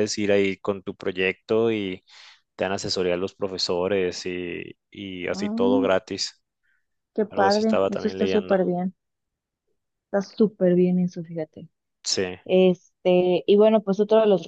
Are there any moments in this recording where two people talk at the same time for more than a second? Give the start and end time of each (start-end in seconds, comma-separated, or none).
7.3-8.6